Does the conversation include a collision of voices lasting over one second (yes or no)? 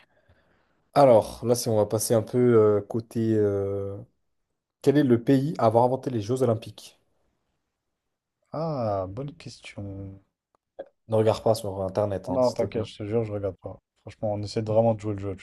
no